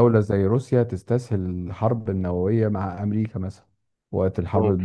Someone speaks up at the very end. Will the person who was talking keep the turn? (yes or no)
yes